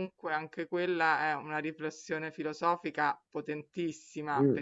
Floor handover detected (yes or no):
no